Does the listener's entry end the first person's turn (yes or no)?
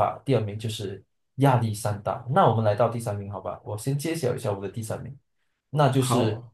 no